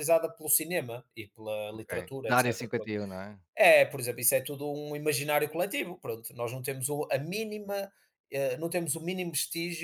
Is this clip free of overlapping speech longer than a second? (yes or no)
no